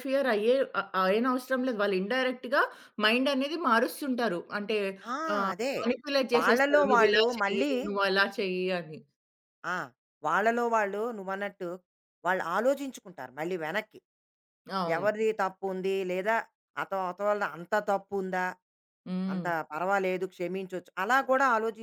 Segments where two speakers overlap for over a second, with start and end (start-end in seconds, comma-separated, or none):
6.3-7.7